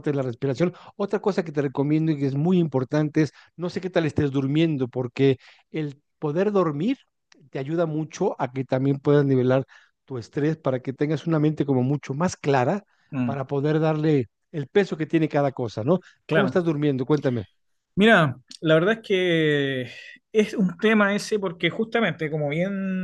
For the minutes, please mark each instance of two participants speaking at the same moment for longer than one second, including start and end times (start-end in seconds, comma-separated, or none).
none